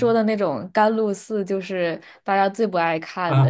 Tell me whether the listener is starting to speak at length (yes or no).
yes